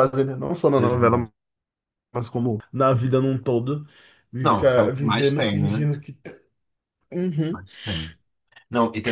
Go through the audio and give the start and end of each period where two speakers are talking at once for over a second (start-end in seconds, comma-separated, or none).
4.4-5.9